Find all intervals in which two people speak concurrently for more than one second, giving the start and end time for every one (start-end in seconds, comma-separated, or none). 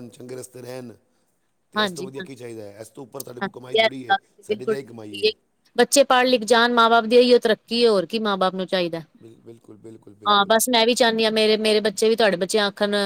3.4-5.3